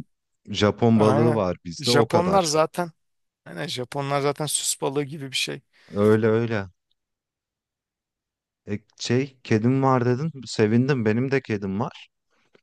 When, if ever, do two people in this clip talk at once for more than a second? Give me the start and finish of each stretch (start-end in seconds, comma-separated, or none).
0.9-2.5